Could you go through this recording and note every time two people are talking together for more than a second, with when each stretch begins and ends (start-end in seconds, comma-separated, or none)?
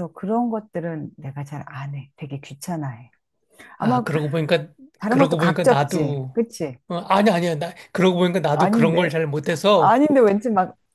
5.1-6.3